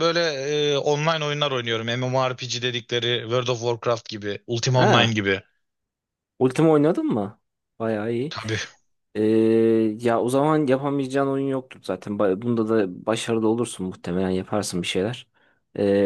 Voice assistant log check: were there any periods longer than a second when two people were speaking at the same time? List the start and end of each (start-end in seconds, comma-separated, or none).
none